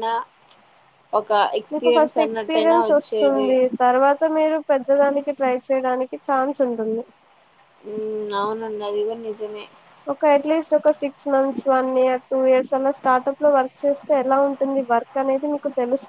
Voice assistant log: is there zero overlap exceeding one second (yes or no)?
no